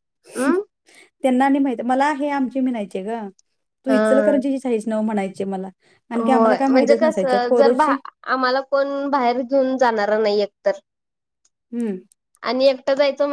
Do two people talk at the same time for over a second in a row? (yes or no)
yes